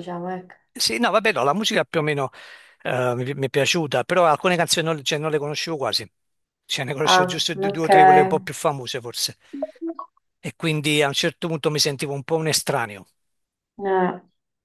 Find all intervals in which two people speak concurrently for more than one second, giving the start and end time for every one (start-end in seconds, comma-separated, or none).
7.0-8.4